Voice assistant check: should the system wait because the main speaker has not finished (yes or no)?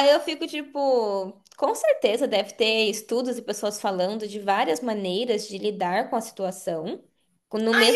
no